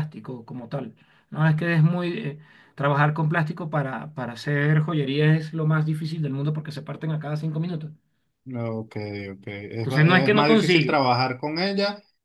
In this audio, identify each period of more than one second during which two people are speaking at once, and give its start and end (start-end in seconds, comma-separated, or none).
9.8-11.1